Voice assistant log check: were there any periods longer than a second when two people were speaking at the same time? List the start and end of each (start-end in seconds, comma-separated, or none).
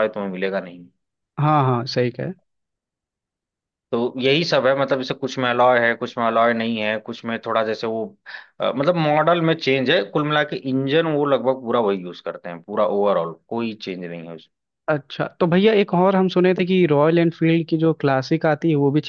none